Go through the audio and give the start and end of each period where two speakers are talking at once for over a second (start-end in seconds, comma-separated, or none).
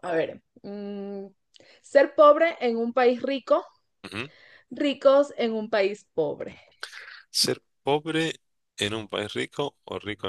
none